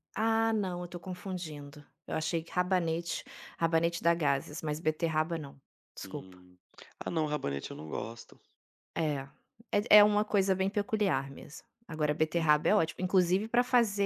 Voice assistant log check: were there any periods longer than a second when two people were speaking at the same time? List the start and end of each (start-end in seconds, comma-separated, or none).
none